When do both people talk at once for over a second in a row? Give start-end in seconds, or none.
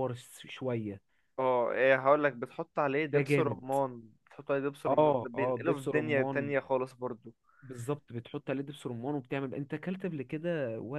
4.9-6.4